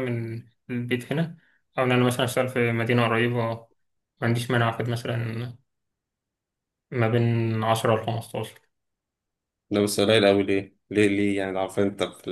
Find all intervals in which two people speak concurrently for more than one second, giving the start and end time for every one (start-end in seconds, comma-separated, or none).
none